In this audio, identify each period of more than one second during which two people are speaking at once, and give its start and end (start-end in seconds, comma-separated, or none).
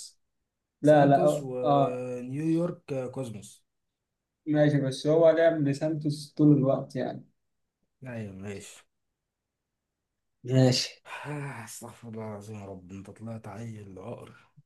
0.8-2.1